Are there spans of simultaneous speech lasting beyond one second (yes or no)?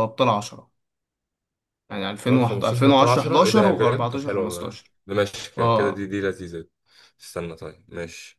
yes